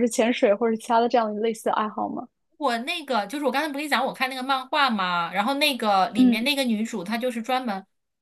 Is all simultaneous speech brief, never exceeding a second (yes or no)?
yes